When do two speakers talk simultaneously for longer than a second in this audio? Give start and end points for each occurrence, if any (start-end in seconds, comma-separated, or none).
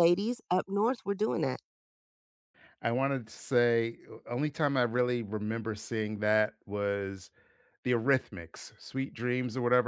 none